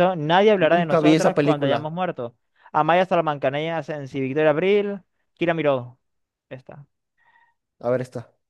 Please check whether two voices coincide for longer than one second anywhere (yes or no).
yes